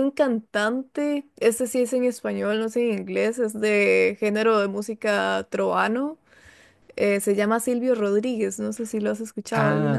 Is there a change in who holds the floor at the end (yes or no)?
yes